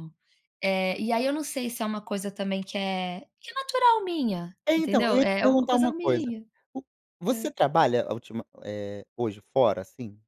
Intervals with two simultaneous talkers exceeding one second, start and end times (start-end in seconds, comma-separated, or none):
4.7-6.3